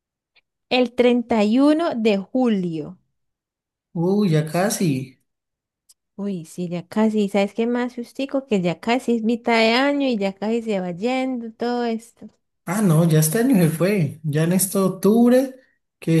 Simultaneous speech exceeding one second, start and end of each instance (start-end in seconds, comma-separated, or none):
none